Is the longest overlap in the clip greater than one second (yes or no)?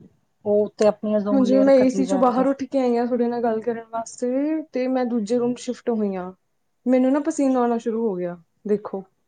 no